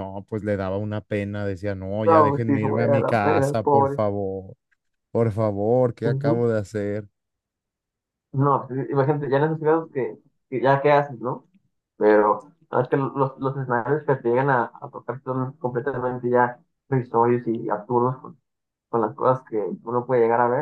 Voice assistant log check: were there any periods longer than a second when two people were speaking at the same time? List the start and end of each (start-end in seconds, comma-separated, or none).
2.1-4.0